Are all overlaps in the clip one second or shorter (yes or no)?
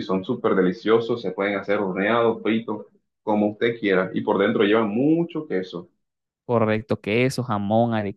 yes